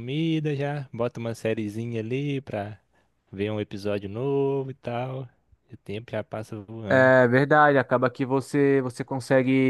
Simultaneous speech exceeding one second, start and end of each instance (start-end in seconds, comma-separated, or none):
none